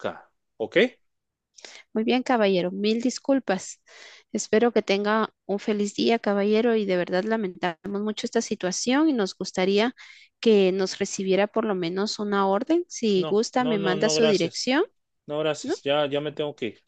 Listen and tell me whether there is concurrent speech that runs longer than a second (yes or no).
yes